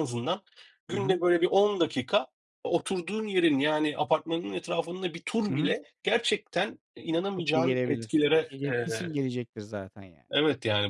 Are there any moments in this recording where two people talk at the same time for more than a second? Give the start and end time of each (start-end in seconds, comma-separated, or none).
7.3-9.2